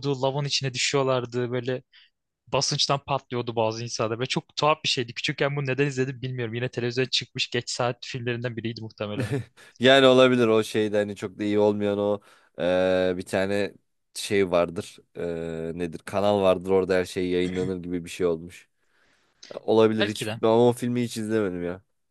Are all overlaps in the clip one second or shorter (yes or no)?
yes